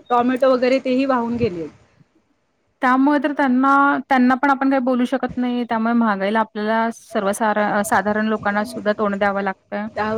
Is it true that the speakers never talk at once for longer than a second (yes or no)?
yes